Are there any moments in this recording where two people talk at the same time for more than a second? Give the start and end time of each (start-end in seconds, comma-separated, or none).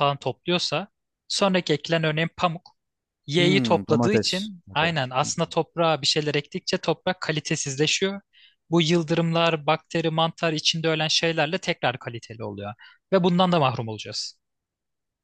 3.4-5.5